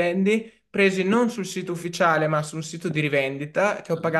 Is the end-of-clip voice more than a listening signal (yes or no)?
no